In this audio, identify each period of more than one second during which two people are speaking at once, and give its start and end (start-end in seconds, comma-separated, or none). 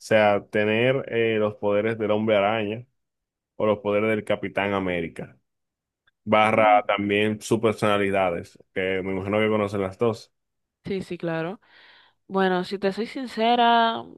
none